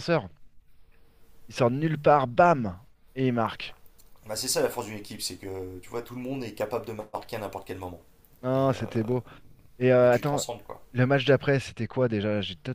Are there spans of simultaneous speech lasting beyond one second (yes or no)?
no